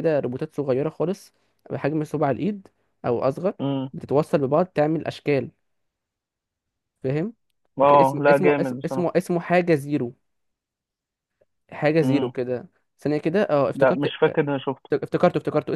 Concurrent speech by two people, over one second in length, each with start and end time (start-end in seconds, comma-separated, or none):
7.8-9.1